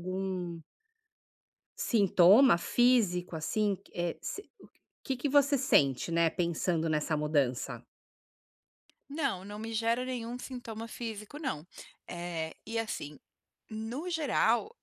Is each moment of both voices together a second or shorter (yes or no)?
yes